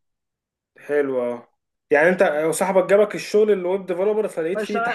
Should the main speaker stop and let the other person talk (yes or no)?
yes